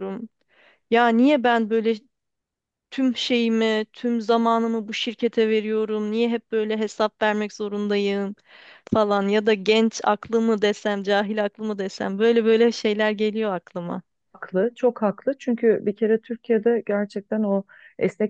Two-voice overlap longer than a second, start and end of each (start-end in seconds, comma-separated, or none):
none